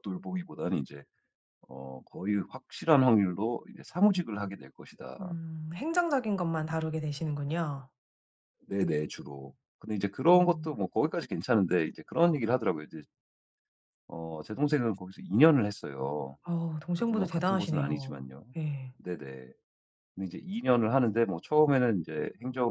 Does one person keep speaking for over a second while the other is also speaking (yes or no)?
yes